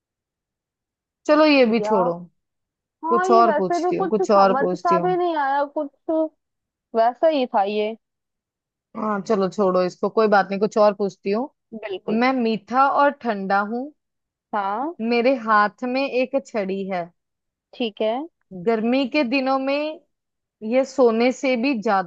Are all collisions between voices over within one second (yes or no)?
no